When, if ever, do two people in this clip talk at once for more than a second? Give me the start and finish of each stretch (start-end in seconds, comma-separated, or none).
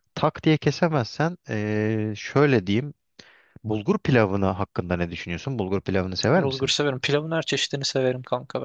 none